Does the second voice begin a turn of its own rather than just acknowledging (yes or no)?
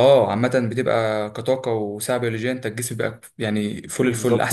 yes